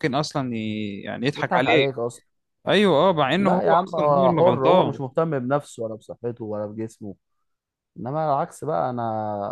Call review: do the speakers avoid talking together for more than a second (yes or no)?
no